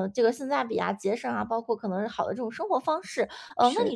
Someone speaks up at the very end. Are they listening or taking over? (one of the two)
listening